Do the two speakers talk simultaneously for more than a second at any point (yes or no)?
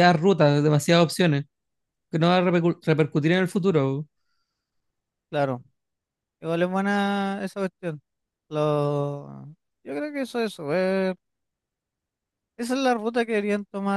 no